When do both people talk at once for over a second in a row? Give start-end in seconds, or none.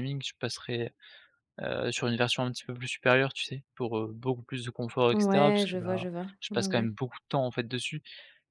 5.1-6.9